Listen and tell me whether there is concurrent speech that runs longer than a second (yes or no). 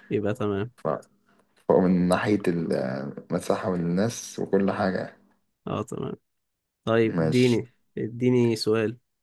no